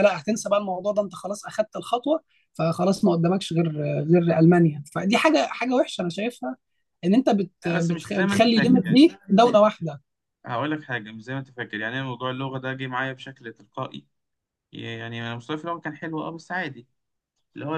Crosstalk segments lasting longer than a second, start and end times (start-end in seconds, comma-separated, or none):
7.7-9.0